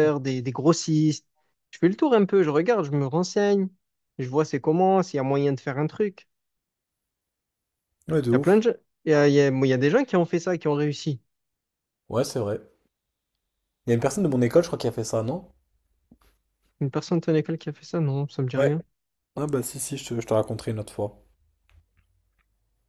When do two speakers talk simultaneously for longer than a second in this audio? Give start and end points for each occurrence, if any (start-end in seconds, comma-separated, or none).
none